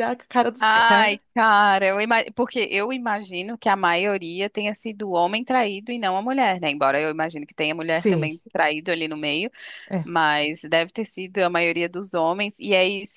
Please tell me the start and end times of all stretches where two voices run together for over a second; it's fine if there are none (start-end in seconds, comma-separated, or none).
none